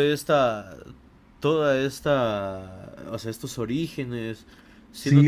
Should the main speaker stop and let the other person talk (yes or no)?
yes